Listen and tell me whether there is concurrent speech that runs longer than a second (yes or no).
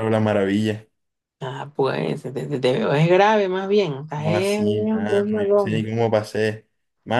yes